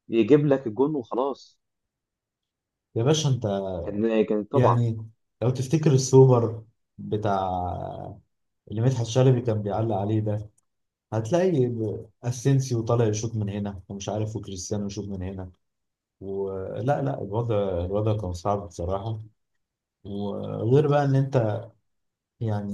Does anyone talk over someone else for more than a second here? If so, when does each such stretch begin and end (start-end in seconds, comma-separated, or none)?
none